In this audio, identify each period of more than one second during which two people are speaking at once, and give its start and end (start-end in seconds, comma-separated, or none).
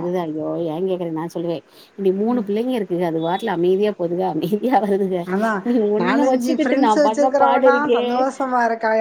6.0-8.0